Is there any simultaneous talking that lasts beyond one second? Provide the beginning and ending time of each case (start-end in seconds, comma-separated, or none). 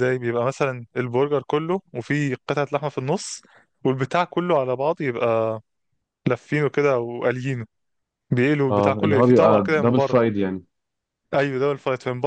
8.7-10.2